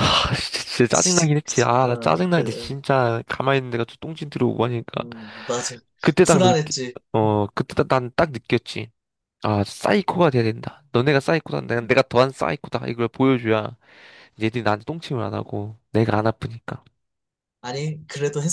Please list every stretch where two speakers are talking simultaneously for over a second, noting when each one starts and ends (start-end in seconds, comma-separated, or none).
0.9-2.8